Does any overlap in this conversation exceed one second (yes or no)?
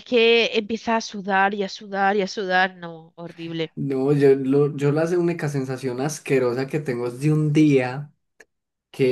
no